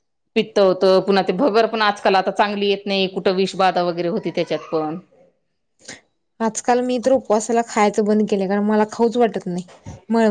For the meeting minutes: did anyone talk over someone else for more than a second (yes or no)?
no